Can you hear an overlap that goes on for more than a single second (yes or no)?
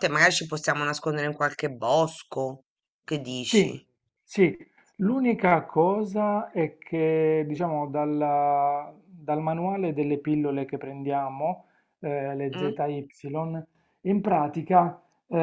no